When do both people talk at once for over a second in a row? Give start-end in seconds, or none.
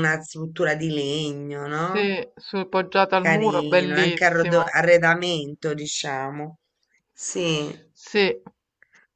3.1-4.8